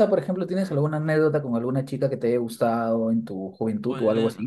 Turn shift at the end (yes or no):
yes